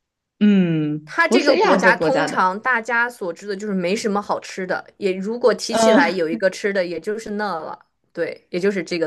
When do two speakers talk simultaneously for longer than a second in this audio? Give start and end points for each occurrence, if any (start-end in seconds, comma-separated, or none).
1.0-2.5